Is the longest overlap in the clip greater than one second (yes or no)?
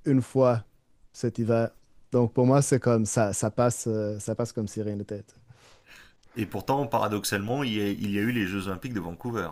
no